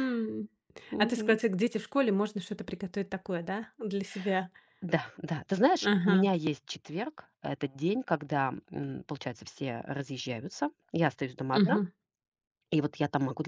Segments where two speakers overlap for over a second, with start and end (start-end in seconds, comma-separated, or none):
none